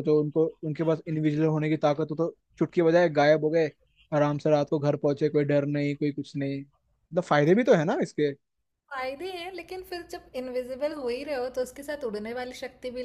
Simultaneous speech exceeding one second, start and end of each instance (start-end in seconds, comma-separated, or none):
none